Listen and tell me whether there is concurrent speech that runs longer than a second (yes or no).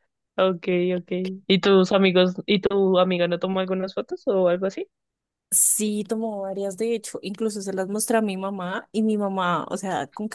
no